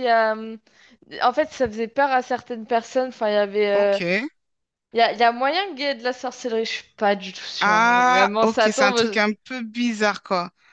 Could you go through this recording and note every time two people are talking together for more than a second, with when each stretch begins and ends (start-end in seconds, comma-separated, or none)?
7.6-9.2